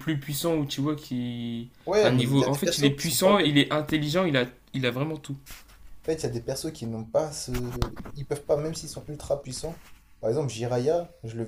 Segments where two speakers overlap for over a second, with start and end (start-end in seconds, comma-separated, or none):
1.9-3.5